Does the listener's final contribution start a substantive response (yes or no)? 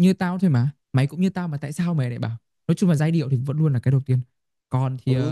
yes